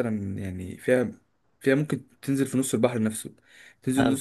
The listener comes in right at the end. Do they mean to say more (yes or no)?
no